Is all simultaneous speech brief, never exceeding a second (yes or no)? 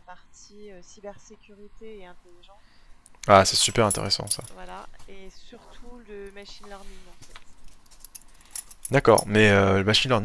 yes